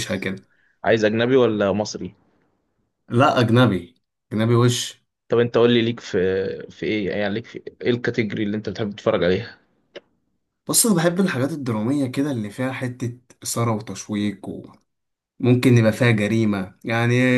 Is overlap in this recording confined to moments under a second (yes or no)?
yes